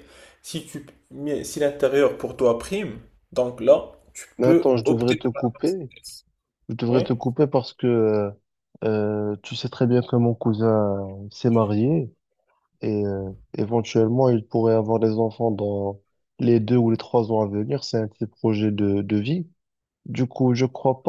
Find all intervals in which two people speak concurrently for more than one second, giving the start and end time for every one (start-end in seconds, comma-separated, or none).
4.4-5.9